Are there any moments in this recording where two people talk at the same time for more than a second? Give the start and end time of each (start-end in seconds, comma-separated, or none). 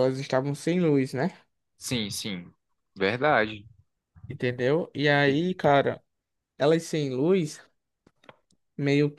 none